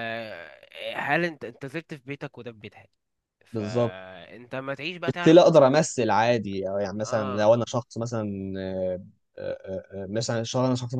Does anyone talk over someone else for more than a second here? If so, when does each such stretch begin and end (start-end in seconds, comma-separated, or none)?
none